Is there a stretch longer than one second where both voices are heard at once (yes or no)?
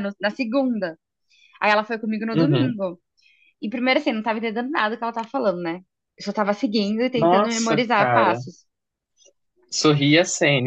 yes